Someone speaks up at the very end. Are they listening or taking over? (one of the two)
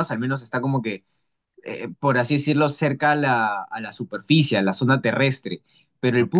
listening